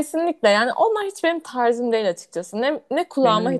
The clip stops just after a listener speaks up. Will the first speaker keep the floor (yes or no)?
yes